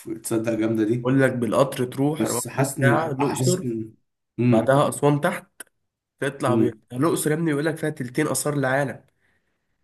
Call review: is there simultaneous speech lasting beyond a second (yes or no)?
yes